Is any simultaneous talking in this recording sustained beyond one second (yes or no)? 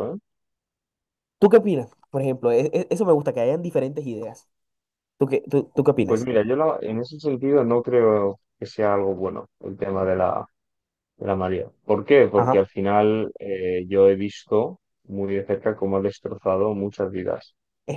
no